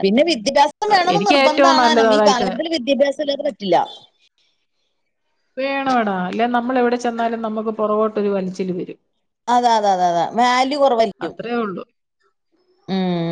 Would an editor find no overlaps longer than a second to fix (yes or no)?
no